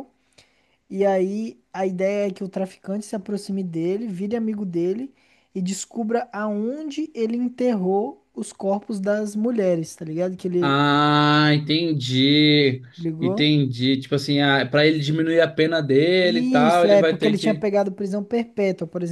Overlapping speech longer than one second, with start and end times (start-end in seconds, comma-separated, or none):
16.3-17.7